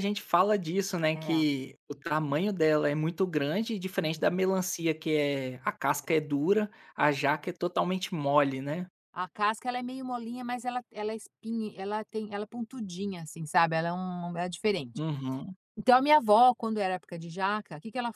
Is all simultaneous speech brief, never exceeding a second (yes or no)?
yes